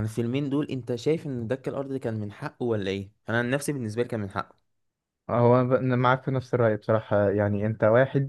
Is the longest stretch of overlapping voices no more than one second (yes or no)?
yes